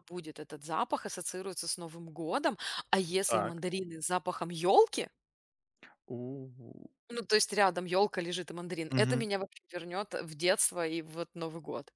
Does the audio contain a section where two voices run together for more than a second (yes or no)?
no